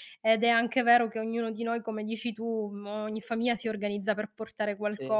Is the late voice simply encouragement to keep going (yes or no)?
yes